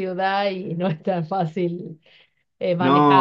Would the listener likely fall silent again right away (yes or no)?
yes